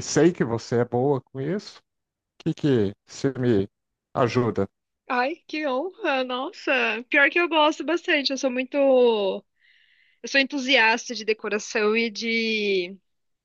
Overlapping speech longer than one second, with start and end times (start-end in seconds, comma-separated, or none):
none